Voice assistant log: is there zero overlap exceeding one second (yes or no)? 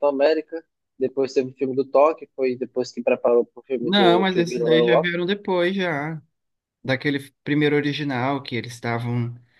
no